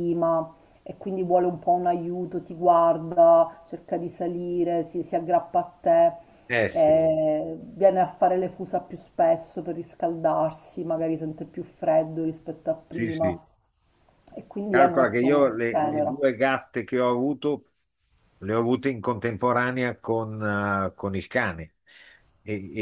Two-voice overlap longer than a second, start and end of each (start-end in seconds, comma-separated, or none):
14.7-16.2